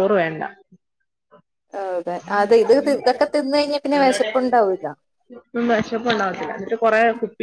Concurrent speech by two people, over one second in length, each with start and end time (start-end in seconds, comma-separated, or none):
none